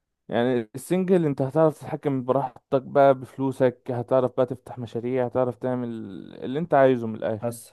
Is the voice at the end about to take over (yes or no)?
no